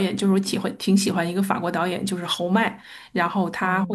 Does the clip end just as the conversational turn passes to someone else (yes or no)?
no